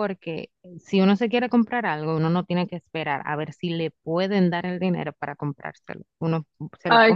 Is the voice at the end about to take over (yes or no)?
yes